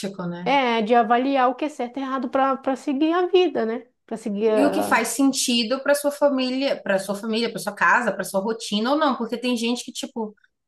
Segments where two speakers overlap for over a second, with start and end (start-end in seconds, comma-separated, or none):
none